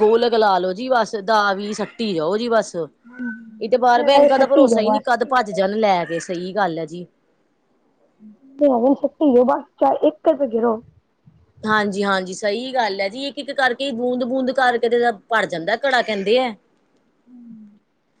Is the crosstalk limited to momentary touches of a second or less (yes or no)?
no